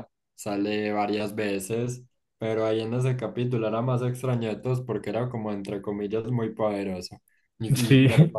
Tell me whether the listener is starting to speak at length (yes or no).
no